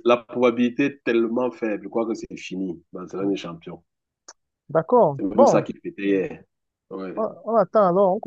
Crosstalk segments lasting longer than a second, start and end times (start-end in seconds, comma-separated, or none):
none